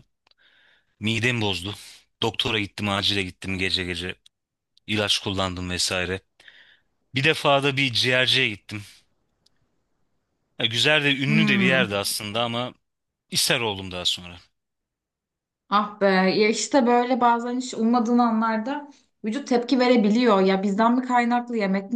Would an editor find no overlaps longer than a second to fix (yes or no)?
yes